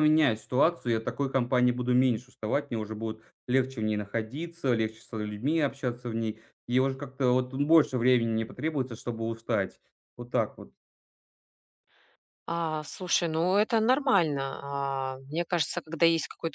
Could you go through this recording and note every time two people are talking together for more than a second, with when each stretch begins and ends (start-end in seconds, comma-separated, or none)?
none